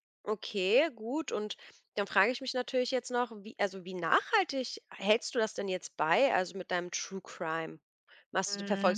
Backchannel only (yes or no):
yes